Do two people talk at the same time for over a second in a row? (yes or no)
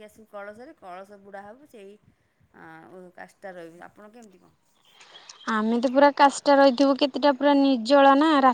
no